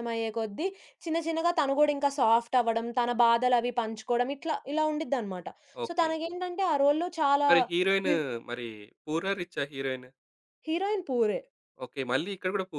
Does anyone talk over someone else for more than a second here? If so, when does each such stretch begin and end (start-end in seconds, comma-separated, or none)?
none